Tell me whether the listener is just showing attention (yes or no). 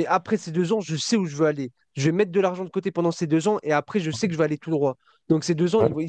yes